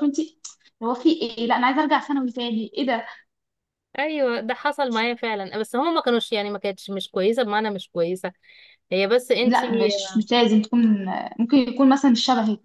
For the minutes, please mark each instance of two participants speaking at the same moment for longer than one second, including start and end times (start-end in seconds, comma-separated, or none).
none